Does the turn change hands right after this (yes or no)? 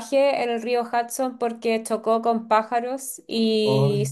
no